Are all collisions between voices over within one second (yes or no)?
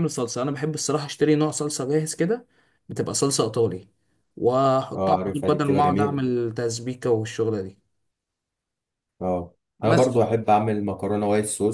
no